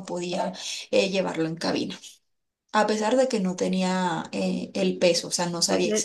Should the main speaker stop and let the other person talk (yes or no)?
yes